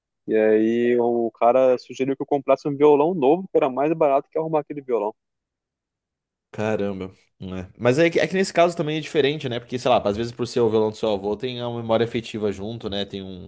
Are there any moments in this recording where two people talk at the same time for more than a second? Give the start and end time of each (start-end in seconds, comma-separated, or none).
none